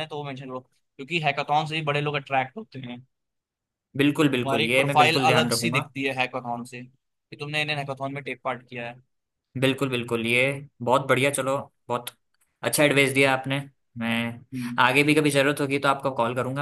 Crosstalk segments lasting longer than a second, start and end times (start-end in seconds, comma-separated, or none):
4.4-5.9